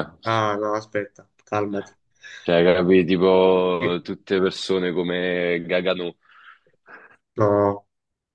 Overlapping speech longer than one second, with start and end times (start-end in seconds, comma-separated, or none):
none